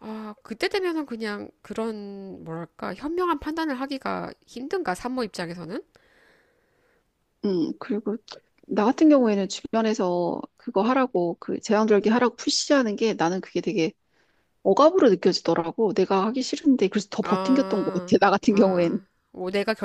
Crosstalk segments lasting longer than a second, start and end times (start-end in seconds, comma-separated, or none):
17.2-19.0